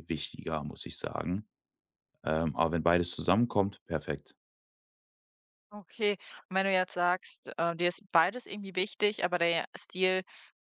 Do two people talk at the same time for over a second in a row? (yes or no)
no